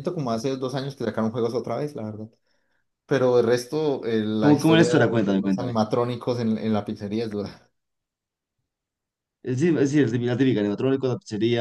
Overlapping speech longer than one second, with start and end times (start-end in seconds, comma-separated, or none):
4.4-5.7